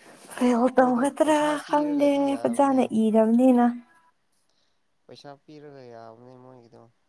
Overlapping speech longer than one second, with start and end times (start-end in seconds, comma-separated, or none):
0.8-2.8